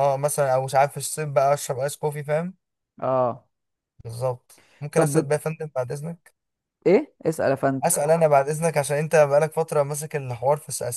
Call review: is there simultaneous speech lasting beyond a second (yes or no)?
no